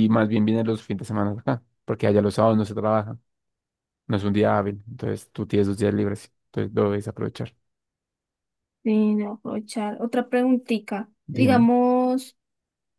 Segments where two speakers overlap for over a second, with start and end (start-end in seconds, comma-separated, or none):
none